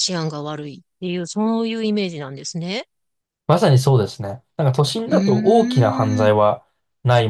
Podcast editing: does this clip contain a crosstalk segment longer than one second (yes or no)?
yes